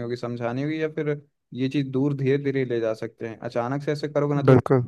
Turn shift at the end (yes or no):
no